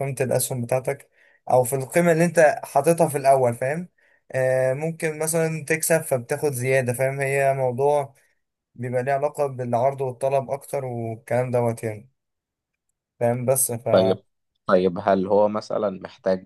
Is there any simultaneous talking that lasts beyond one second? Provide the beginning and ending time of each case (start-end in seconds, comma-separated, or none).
none